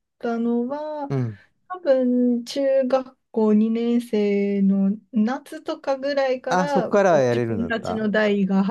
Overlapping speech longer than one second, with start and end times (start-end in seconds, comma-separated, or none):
6.5-8.1